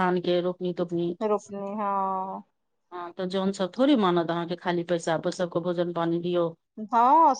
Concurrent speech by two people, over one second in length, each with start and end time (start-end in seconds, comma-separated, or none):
none